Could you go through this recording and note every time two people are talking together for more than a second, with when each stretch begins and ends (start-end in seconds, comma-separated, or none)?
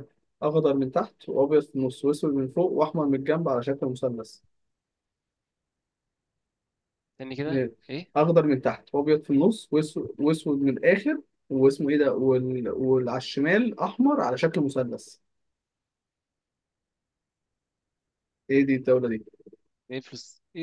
none